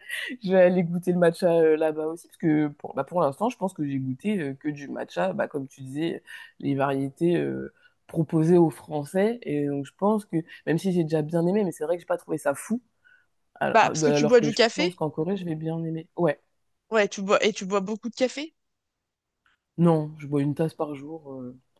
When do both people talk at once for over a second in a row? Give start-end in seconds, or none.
13.7-15.0